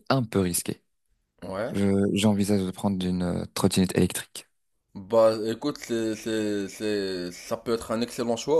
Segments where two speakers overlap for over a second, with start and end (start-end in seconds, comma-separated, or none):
none